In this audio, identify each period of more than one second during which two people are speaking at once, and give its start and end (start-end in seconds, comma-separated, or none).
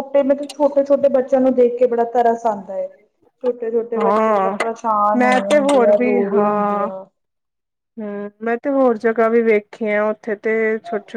5.2-6.9